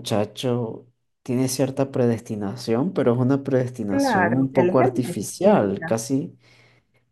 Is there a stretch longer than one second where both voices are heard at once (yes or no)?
yes